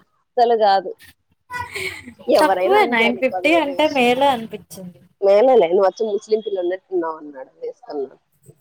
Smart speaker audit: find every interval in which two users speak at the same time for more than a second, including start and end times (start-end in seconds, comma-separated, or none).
2.4-4.1